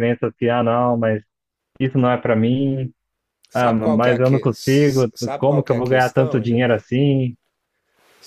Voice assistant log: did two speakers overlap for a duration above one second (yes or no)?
yes